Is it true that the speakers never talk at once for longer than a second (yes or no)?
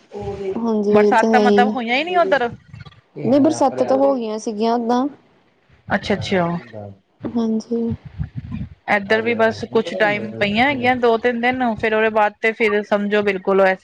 no